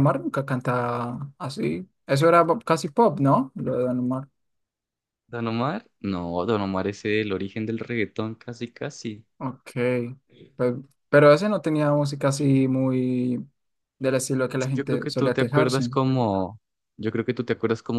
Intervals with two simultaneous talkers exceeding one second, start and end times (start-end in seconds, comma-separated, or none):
14.5-15.9